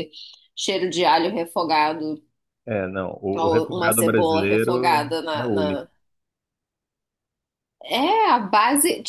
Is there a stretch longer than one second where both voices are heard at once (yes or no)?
yes